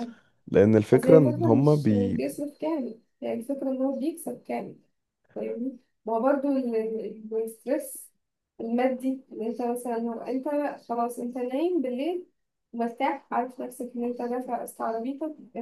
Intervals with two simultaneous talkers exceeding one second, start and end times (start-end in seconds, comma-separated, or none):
0.9-2.2